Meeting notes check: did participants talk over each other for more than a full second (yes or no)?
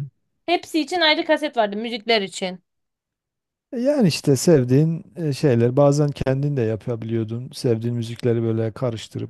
no